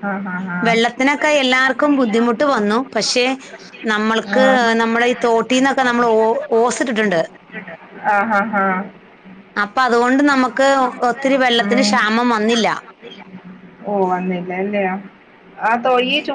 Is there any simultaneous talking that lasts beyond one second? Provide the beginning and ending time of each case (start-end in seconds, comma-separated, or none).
11.2-12.7